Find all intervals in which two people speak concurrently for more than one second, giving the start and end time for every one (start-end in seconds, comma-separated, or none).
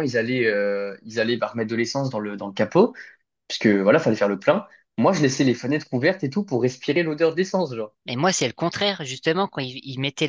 none